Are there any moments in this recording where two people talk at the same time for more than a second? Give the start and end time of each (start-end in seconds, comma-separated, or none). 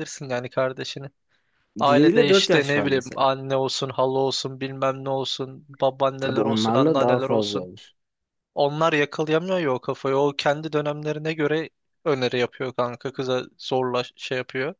1.9-3.2, 6.2-7.7